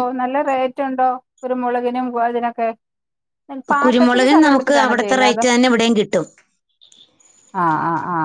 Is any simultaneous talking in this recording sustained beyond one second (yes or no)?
yes